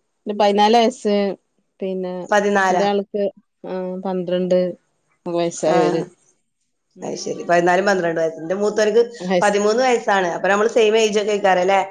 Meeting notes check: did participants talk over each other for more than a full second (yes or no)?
no